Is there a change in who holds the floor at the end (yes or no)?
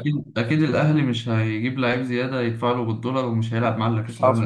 yes